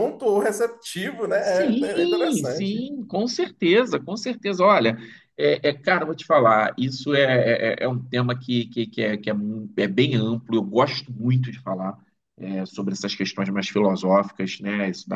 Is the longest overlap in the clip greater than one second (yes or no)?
yes